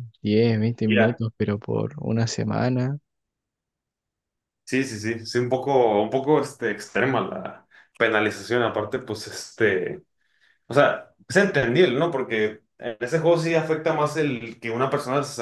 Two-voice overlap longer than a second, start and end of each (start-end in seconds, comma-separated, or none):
none